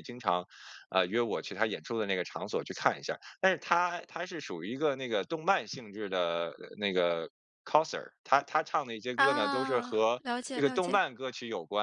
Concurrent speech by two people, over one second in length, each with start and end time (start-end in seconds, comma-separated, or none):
9.2-11.0